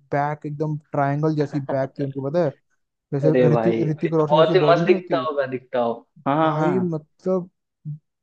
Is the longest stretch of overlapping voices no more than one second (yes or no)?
no